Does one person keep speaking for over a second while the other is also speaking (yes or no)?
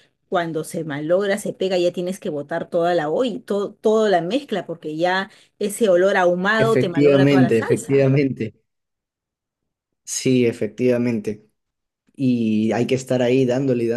yes